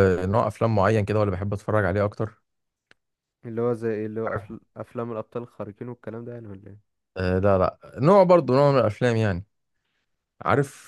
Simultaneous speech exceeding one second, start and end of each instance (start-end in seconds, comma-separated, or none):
none